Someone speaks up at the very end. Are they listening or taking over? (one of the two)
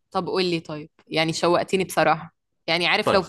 listening